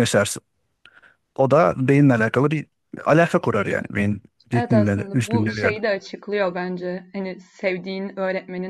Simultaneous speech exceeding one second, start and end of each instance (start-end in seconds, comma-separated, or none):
4.5-5.8